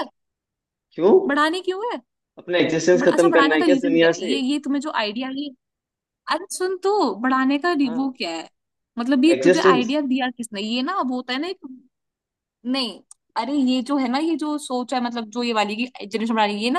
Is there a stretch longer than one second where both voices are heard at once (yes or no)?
yes